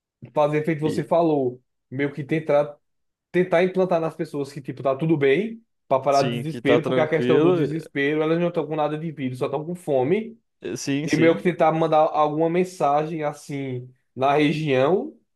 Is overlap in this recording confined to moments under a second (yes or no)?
no